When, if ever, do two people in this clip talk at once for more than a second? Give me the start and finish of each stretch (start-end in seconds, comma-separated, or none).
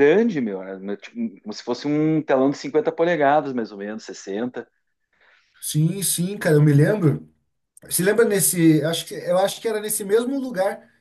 none